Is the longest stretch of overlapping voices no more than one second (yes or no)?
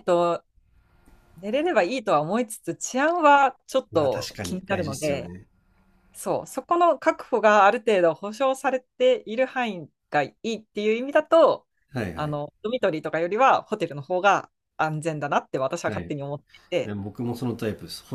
no